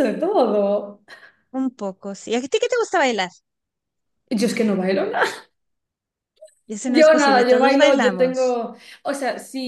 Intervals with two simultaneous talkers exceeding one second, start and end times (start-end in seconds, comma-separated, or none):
6.9-8.6